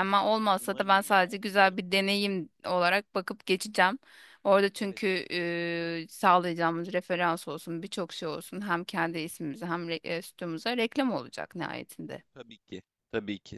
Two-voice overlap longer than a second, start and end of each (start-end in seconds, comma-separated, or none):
0.6-1.8